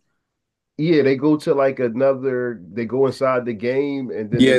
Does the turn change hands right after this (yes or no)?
yes